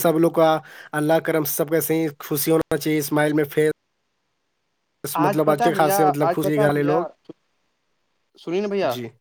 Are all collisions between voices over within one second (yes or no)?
no